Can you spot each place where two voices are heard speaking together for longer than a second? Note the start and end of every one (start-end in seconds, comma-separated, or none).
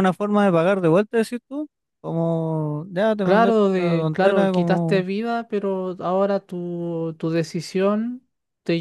3.2-5.0